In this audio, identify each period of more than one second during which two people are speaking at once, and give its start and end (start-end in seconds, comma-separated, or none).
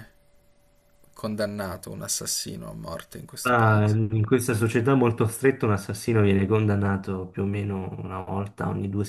none